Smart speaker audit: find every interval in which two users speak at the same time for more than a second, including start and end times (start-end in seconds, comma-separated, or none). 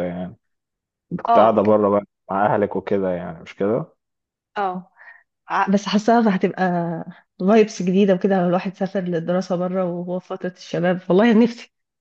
none